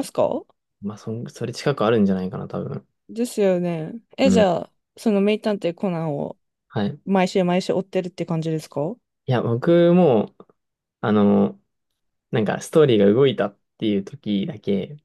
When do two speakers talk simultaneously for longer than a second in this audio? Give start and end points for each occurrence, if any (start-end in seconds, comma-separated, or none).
none